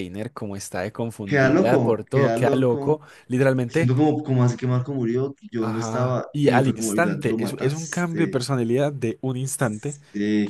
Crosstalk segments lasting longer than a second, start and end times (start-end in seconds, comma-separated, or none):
1.2-3.0, 5.6-8.4